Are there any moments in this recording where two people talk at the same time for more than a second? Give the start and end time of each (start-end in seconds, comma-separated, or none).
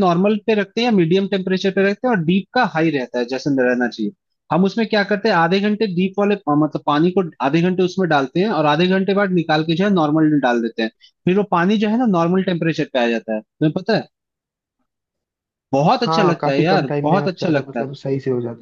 16.0-17.9